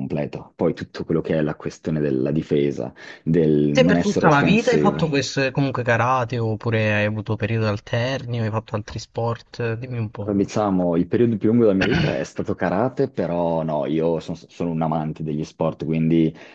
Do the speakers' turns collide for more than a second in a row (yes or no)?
yes